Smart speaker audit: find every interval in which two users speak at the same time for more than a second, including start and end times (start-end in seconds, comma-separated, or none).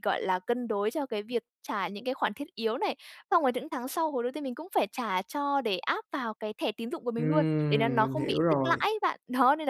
7.2-8.9